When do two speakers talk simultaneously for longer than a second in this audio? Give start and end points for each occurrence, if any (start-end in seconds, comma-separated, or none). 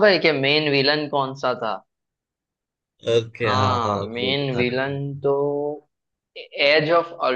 3.5-5.0